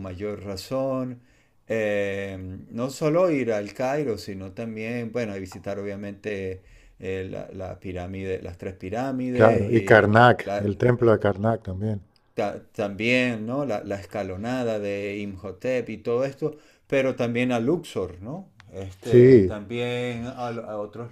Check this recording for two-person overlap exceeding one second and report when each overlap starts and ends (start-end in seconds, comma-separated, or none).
9.3-10.6